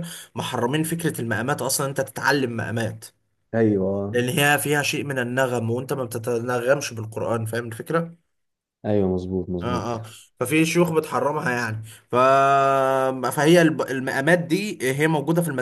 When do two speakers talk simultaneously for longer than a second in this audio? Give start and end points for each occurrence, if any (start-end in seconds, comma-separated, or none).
none